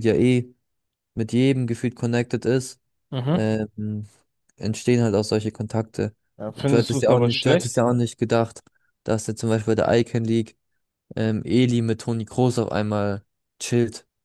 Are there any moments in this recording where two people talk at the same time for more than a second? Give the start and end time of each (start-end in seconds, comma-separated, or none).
6.4-7.8